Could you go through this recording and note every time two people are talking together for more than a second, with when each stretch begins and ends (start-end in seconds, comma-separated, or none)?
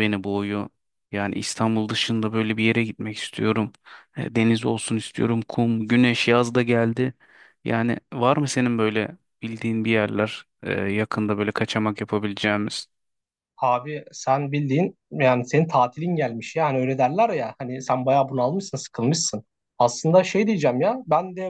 none